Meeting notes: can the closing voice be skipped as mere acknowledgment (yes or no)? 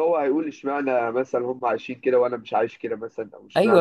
no